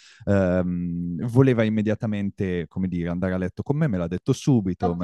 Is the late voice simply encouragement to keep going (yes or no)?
yes